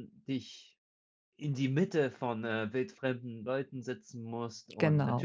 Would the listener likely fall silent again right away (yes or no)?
yes